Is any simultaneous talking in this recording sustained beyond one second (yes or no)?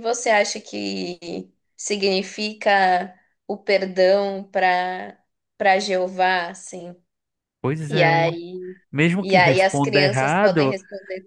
yes